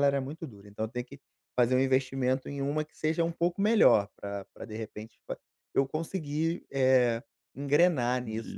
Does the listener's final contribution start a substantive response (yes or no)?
yes